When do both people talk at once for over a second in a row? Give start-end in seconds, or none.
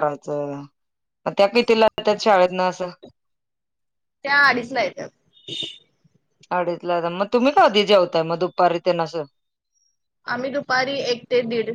none